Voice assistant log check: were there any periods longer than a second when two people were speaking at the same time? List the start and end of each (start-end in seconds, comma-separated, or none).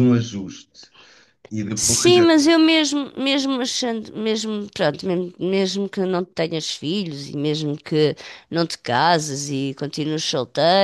none